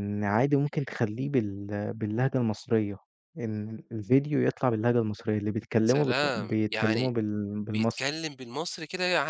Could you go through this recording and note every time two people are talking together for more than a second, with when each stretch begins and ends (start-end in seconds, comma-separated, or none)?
5.9-7.1